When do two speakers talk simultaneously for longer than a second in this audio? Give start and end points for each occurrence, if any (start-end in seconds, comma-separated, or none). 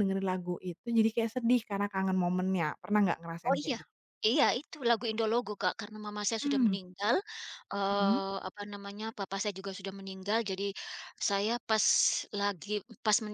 none